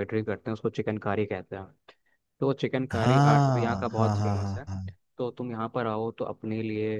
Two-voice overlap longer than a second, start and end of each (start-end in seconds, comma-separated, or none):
2.9-4.7